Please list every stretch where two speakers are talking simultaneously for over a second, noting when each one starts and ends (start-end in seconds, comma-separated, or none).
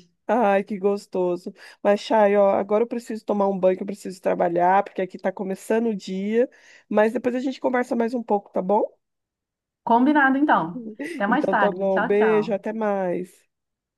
11.3-12.6